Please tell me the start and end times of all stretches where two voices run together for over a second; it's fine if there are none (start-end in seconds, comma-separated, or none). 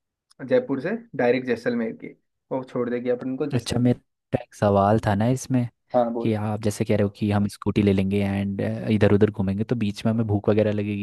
none